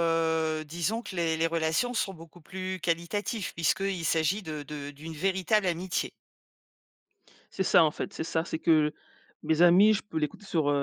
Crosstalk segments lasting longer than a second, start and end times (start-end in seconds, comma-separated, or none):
none